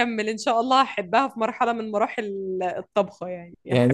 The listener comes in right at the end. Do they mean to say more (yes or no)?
yes